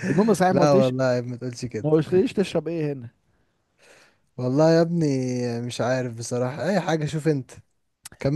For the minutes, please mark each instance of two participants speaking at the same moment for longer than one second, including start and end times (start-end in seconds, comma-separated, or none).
none